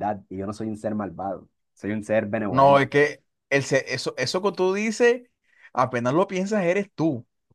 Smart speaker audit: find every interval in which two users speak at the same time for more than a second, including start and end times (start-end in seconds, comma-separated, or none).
none